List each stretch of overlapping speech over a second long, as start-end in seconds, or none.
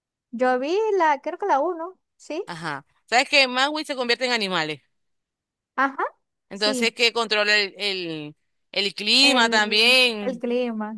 9.2-10.4